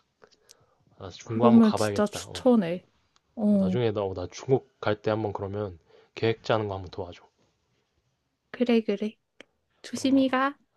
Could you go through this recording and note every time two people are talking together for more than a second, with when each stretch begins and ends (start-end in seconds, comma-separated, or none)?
1.2-2.5